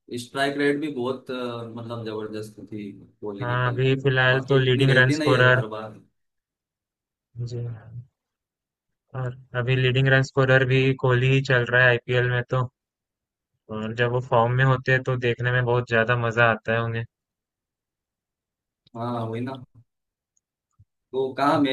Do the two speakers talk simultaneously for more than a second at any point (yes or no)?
yes